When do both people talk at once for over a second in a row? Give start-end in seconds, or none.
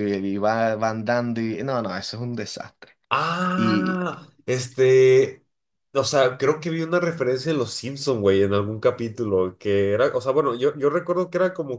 none